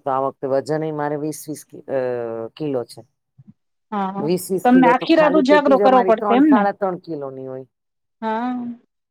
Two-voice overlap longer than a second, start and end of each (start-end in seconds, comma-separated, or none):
none